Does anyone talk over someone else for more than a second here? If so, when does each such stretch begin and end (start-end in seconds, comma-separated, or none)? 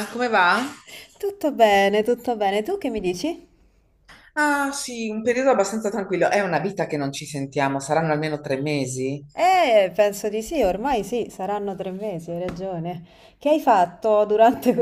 none